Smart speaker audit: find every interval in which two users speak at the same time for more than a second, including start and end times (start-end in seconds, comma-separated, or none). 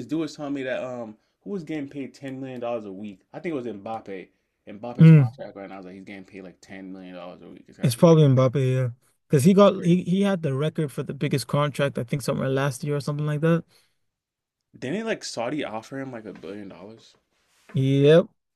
none